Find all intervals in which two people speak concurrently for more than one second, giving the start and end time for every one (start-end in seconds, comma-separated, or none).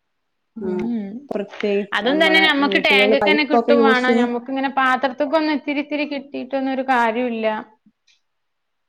2.0-4.3